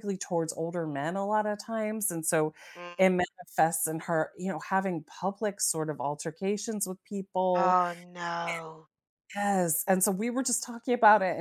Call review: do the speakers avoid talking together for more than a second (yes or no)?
yes